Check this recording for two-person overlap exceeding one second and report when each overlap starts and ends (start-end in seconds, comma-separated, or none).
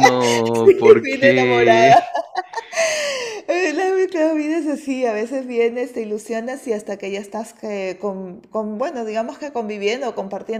0.6-2.0